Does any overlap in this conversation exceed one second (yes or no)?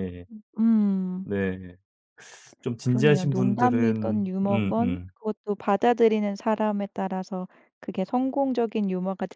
yes